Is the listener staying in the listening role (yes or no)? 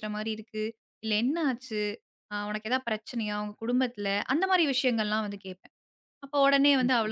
yes